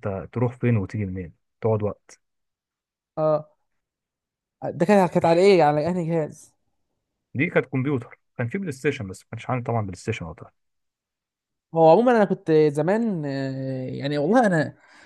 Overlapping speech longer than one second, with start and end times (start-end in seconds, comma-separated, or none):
none